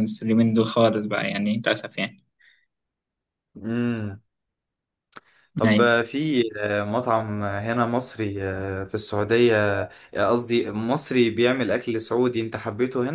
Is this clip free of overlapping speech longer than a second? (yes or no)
yes